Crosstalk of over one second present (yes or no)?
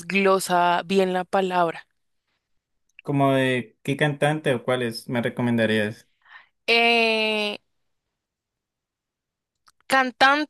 no